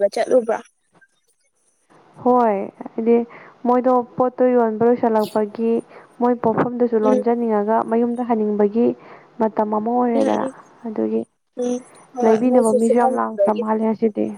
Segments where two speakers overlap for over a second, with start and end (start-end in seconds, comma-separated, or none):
12.2-13.6